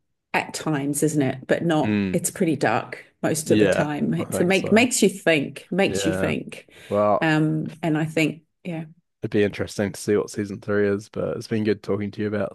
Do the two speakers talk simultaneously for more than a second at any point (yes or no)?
yes